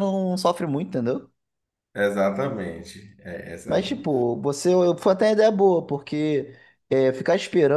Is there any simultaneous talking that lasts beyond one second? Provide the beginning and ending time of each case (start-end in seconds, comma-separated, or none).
none